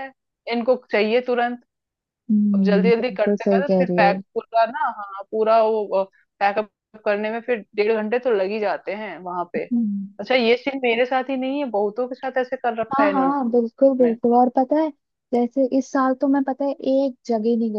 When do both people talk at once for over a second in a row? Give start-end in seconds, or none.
2.5-4.1